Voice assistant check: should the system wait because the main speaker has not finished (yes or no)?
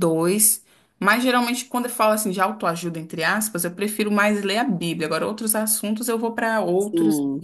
no